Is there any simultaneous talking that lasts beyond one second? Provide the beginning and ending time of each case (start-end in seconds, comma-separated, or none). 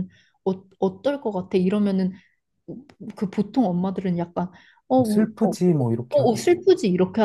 5.0-6.5